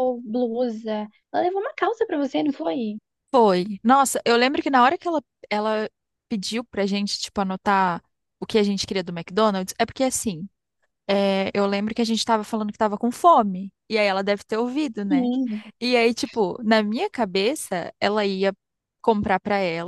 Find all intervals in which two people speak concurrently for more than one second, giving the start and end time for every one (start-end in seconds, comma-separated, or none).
none